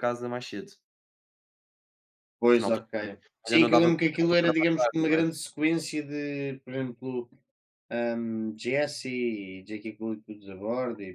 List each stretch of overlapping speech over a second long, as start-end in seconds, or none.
3.5-5.3